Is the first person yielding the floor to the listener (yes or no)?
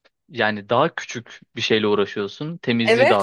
yes